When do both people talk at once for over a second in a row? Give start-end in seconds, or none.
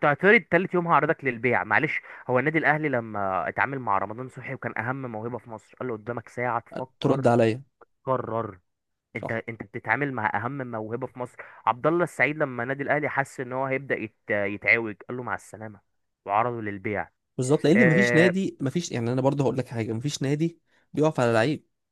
none